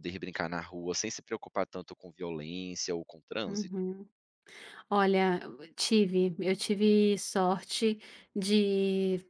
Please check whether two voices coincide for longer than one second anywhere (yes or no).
no